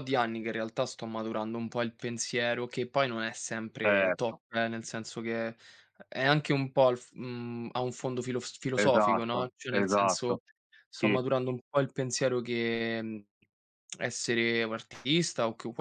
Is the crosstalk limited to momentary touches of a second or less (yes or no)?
no